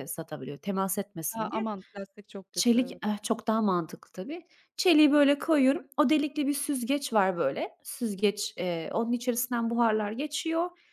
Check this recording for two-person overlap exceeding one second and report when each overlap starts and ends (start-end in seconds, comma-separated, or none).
none